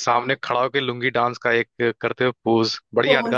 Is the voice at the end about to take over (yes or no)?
yes